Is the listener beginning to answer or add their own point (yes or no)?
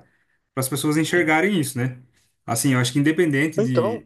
no